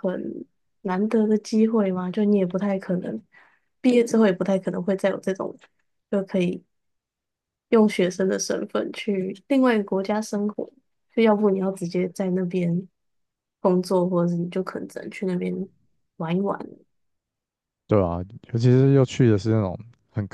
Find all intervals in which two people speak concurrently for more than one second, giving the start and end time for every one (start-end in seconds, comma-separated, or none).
none